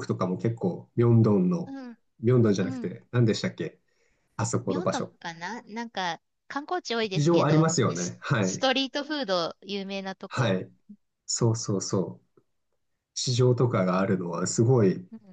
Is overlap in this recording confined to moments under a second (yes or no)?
no